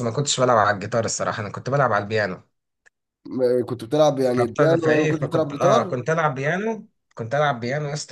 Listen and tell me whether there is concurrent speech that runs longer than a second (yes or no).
yes